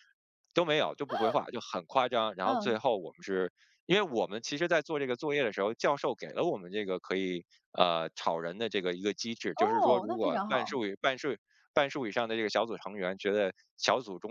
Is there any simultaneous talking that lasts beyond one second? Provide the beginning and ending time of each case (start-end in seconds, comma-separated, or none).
9.6-10.8